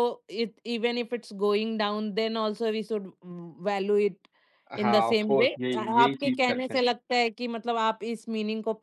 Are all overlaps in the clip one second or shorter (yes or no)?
no